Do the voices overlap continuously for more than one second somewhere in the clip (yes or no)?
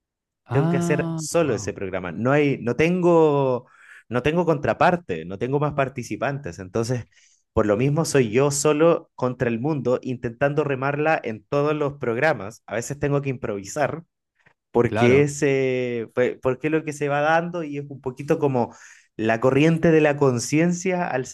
yes